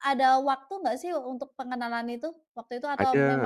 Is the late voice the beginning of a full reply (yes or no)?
yes